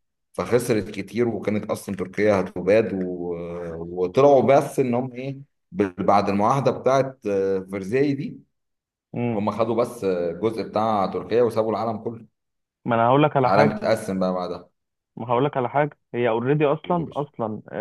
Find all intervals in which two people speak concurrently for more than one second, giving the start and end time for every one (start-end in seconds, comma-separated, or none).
none